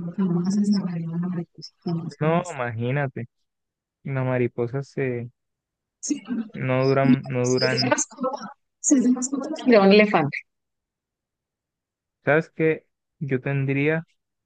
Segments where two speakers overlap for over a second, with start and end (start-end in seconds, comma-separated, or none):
none